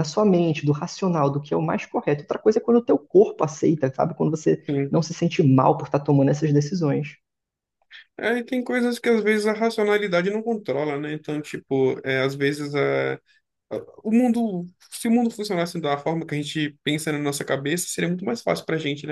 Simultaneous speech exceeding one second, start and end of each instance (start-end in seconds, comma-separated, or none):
none